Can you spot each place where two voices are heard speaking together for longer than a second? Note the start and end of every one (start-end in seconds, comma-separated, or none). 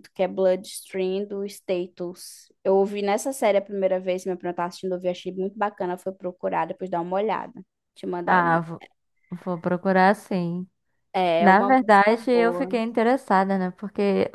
11.4-12.8